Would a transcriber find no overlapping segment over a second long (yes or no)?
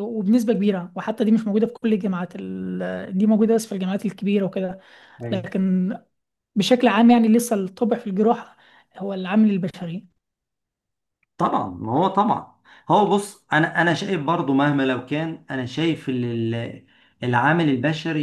yes